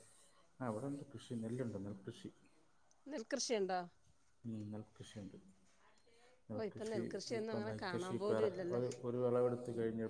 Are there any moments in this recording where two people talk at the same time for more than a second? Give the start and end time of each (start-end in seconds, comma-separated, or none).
6.6-8.8